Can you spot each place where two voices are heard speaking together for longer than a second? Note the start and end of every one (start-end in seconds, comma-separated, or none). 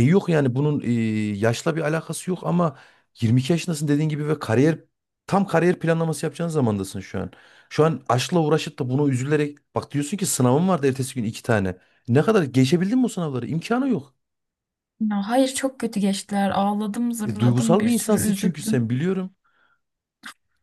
17.2-18.8